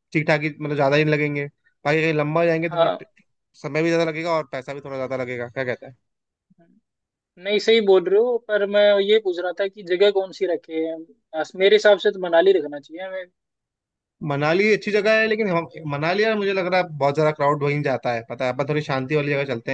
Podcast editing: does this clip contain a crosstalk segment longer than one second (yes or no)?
no